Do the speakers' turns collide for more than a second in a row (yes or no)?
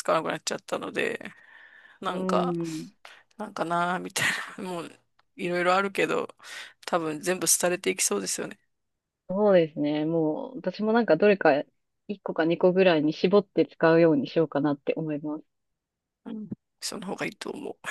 no